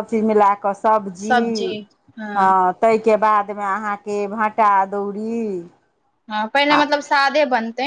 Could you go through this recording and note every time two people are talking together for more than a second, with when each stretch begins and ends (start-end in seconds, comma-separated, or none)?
none